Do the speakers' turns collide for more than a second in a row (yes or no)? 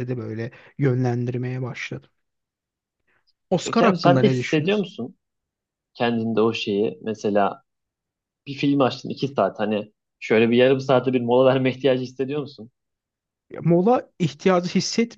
yes